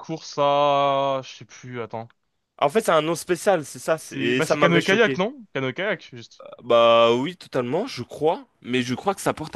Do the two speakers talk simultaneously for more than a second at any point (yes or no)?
yes